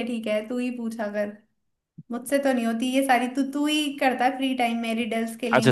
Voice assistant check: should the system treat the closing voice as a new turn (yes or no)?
yes